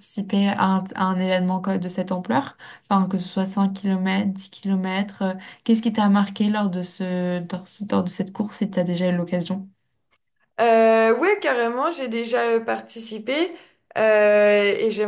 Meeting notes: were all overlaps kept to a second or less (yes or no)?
yes